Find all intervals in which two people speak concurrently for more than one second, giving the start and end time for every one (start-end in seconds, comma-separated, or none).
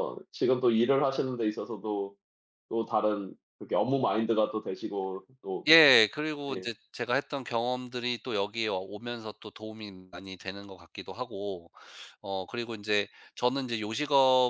none